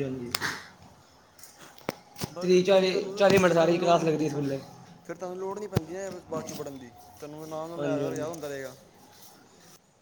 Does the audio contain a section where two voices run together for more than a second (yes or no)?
yes